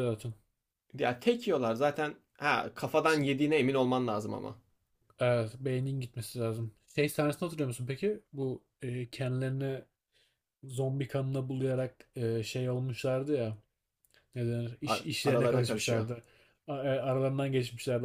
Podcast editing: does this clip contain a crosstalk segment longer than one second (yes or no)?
yes